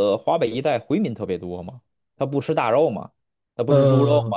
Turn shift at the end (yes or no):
no